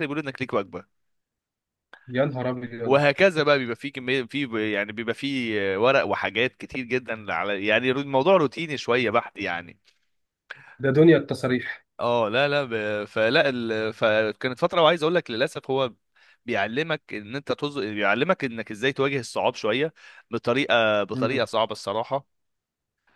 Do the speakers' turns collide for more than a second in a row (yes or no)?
no